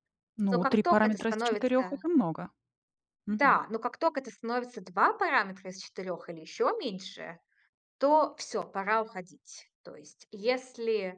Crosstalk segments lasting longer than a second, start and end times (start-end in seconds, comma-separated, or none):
0.5-2.0